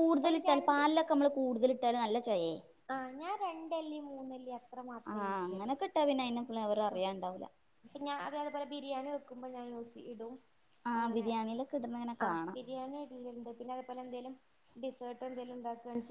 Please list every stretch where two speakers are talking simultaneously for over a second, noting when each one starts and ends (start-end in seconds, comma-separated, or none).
none